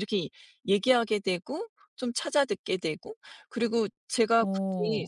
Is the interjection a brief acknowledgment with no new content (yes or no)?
yes